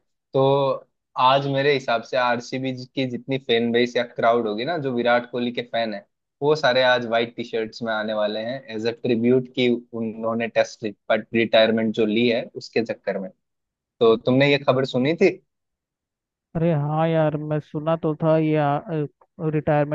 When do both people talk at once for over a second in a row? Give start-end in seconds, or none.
none